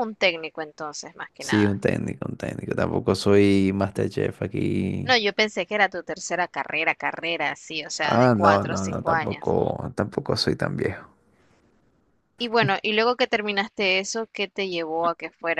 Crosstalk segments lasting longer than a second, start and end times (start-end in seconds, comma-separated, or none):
8.0-9.5